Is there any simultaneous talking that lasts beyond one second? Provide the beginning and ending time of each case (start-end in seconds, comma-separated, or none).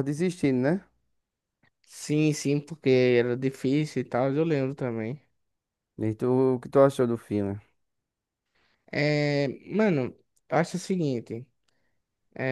none